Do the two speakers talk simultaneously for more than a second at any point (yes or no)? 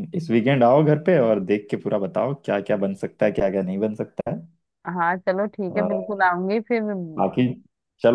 no